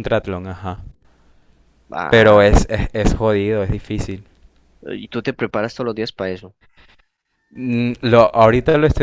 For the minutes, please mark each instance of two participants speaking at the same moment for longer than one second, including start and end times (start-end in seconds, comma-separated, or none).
none